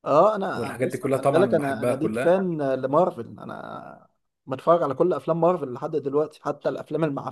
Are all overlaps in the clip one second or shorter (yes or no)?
no